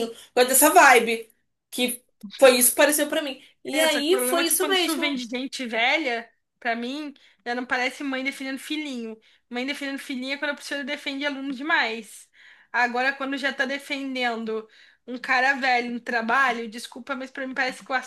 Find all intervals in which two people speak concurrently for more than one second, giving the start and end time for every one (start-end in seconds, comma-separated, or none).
3.7-5.2